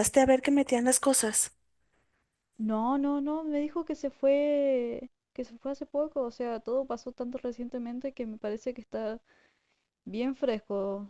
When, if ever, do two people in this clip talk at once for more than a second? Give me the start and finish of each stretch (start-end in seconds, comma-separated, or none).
none